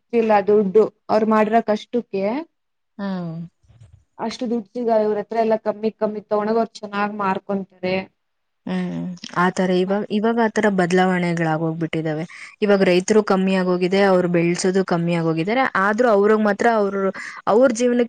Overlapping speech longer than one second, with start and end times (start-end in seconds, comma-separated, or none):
none